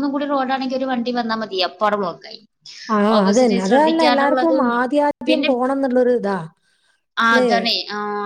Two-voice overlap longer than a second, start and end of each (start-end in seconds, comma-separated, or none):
3.2-4.7